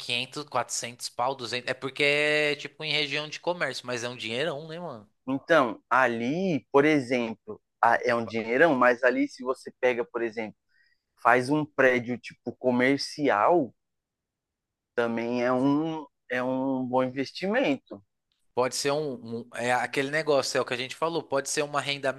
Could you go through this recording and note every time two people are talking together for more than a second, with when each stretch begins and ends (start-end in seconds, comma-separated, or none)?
none